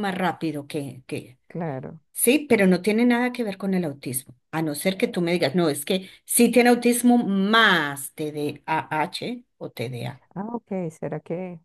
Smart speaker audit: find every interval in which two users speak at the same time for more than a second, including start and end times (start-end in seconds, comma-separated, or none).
none